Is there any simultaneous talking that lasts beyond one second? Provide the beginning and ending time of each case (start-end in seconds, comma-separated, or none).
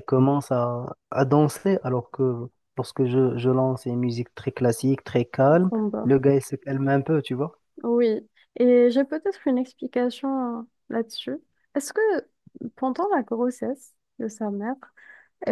none